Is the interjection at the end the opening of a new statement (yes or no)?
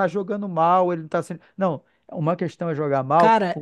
yes